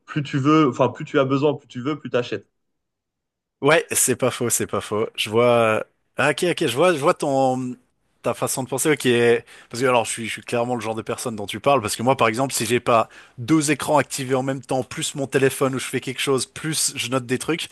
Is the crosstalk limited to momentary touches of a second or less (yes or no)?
yes